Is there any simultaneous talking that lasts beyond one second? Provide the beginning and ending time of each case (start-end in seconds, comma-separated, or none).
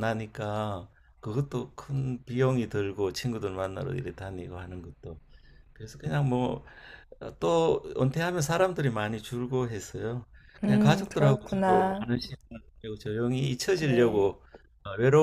10.6-12.1